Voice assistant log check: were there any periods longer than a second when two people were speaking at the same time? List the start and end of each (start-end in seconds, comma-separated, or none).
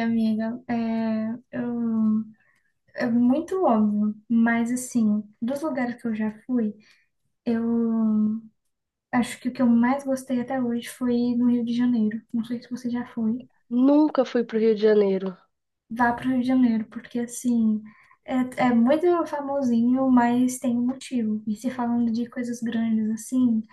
none